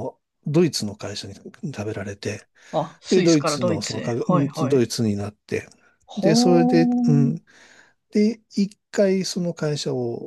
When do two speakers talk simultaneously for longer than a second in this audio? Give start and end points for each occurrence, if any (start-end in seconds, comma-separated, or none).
3.1-4.8